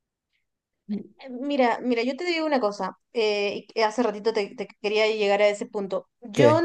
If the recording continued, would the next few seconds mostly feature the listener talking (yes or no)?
no